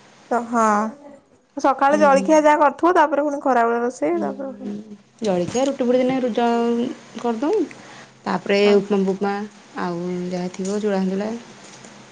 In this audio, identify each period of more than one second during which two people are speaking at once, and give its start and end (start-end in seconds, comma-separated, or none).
none